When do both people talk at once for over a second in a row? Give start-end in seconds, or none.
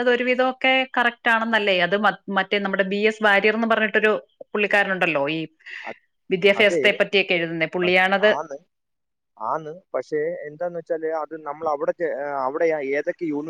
none